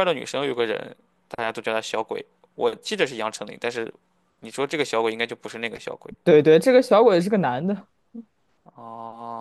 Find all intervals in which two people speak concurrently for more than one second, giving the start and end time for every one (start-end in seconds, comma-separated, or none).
none